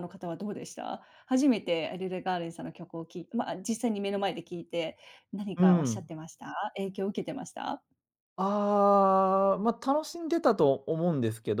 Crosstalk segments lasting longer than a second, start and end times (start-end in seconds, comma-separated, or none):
none